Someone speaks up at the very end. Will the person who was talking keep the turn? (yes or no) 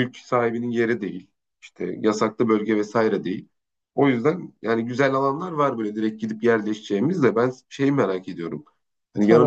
yes